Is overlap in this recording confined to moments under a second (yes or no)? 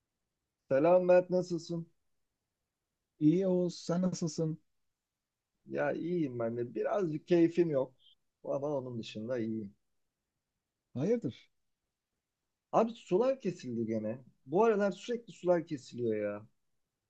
yes